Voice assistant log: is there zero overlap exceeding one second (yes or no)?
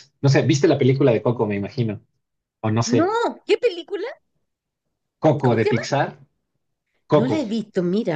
yes